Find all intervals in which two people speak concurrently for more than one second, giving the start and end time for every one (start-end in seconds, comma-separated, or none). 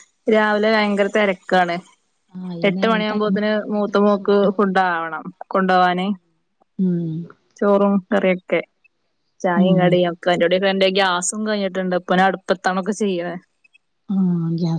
2.7-4.7